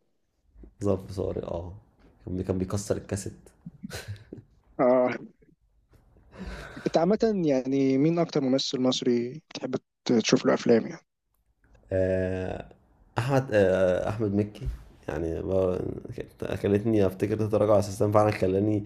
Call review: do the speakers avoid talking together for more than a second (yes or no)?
yes